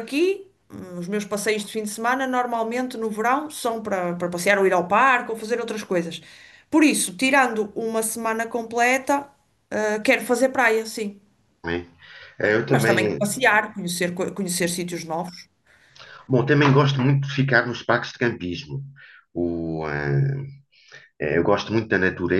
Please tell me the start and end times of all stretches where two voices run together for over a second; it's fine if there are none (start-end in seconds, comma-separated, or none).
none